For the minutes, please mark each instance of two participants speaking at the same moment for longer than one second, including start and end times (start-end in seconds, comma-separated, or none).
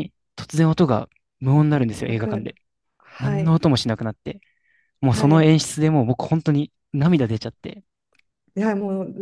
none